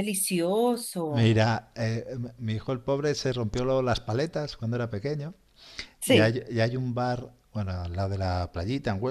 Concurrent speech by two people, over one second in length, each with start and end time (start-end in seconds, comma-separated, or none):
none